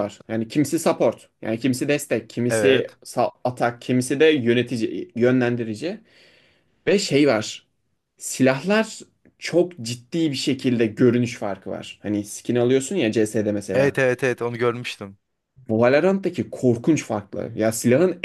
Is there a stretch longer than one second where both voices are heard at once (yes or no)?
no